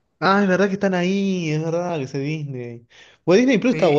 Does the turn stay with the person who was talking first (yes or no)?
yes